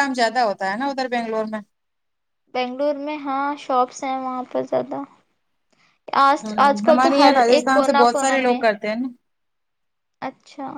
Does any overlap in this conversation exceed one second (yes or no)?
yes